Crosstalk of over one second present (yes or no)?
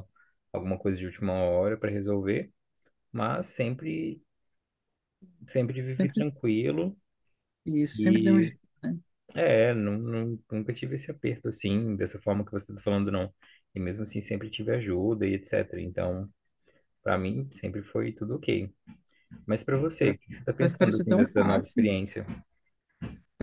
yes